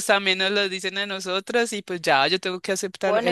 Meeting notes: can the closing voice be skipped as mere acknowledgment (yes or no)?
no